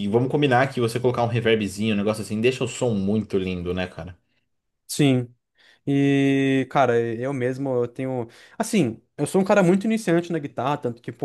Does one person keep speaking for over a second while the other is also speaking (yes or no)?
no